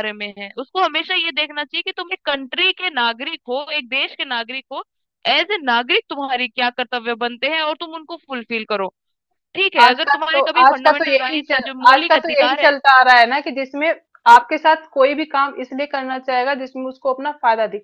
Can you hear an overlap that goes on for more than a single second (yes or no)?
yes